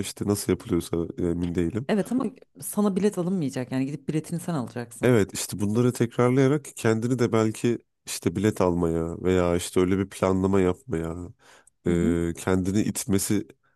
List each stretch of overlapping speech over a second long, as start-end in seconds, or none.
none